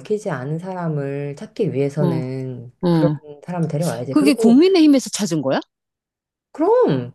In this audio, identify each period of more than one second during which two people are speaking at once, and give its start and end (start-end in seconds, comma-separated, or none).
none